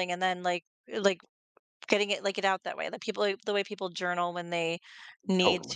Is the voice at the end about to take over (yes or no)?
no